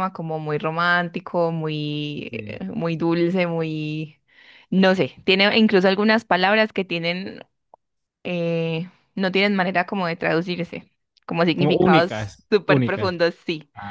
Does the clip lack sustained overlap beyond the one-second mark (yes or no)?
no